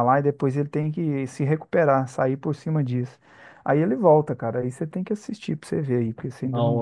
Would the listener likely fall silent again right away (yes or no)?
no